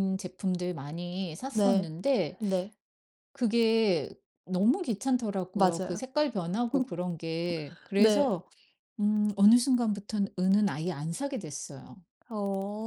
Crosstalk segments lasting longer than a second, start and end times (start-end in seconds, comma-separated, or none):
none